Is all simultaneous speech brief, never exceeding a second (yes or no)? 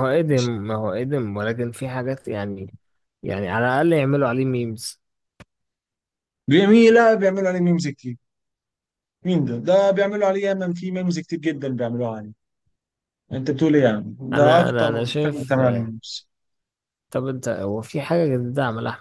no